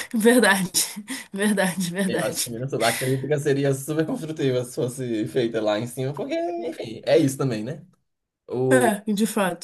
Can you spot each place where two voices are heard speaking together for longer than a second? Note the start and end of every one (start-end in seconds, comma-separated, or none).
none